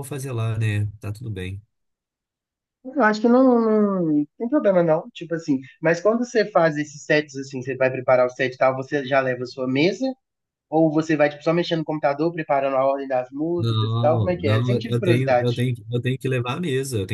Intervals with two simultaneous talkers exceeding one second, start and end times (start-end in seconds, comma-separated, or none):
13.6-15.5